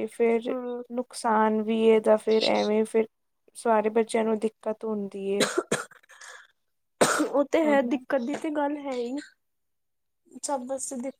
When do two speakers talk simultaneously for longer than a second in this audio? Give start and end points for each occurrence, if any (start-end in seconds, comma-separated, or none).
none